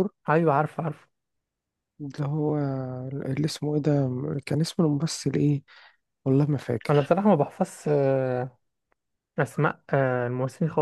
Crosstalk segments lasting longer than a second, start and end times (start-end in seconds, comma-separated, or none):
none